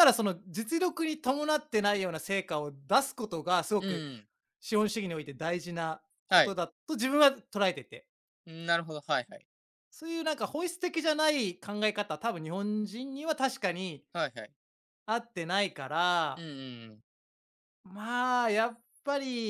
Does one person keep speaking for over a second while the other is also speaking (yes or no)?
no